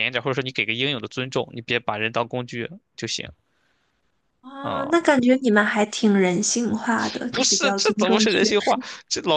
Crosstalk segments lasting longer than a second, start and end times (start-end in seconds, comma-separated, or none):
7.3-8.6